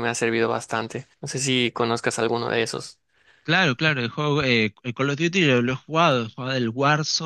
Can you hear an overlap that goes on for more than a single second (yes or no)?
no